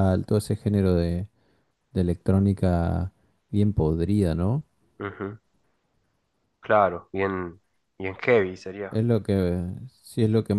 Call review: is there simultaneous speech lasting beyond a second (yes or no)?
no